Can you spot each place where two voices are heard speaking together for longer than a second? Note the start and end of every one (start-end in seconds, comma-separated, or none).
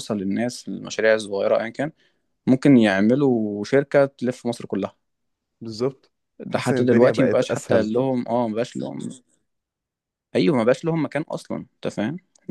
6.5-7.9